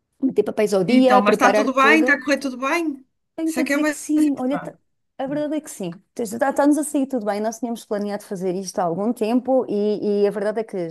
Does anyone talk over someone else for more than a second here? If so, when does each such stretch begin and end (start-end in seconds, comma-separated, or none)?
0.9-2.2, 3.5-4.7